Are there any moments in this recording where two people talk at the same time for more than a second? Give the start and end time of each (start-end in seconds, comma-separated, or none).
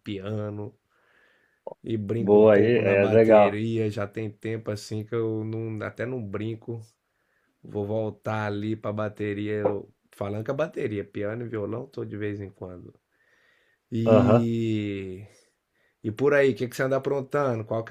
2.2-3.6